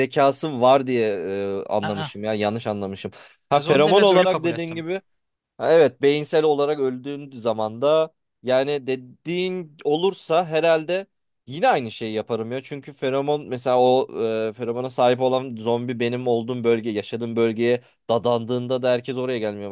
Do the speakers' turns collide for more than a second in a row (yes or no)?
yes